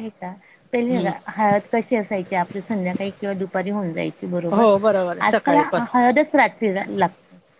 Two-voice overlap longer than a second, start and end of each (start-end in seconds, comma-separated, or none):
none